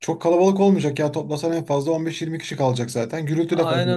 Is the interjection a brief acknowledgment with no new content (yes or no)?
no